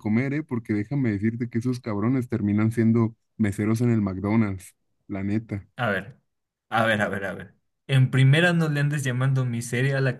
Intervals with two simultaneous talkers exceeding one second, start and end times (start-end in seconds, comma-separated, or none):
none